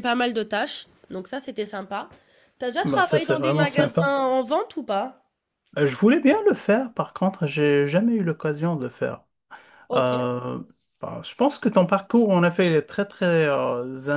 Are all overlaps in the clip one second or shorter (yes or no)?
no